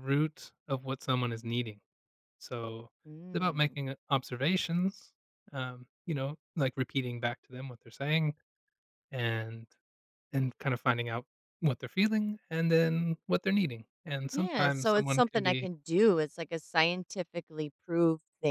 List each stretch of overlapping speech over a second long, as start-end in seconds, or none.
14.3-15.7